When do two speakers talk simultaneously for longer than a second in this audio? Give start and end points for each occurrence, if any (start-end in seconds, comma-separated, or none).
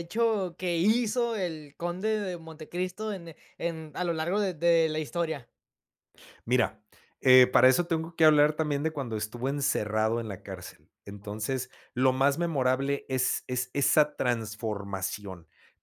none